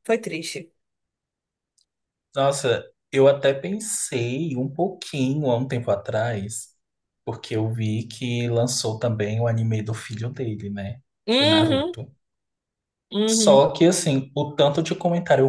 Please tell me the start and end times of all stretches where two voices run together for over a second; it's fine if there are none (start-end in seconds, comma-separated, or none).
none